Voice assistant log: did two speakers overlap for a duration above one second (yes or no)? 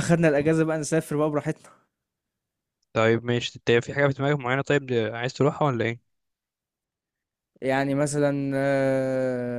no